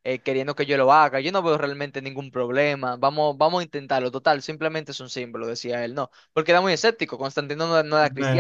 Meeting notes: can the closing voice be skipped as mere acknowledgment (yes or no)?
no